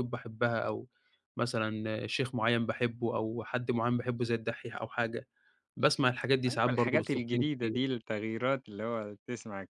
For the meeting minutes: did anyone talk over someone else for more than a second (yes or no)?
yes